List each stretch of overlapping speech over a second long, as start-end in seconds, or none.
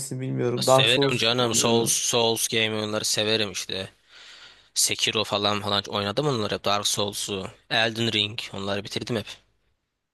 0.6-2.0